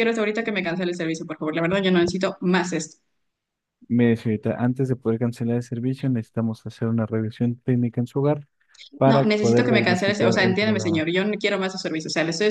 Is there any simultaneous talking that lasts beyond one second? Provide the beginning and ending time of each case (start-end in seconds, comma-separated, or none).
9.1-11.1